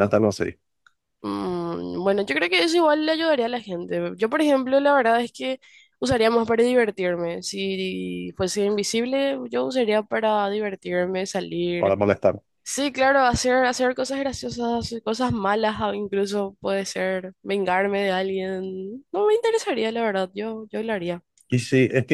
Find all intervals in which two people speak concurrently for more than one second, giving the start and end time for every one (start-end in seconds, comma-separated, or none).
none